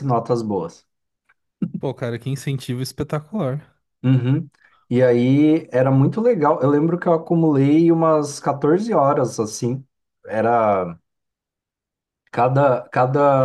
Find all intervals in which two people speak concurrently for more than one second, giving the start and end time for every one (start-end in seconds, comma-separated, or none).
none